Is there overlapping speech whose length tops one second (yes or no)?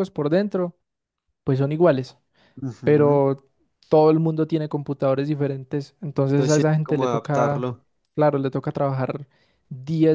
yes